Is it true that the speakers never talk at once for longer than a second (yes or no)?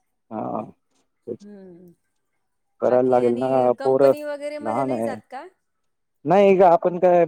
no